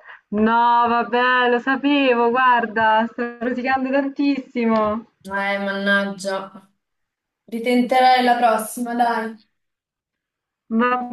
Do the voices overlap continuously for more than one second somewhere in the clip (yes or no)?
no